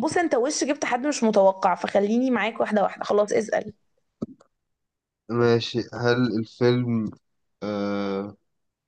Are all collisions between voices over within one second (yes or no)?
yes